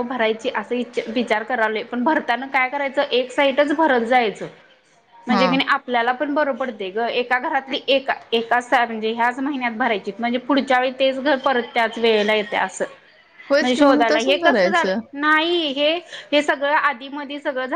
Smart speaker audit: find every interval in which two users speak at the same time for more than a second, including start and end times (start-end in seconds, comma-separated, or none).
13.6-15.0